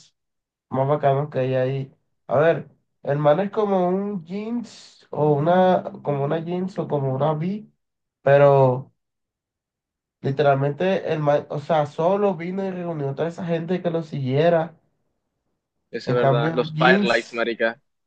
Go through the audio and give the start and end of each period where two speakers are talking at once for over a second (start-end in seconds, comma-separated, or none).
16.1-17.4